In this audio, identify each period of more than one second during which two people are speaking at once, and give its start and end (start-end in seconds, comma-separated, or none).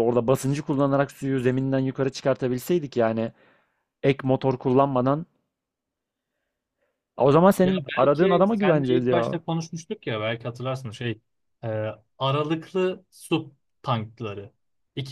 7.6-9.4